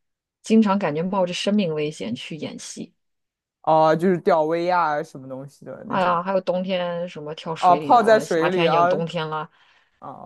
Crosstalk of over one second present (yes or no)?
yes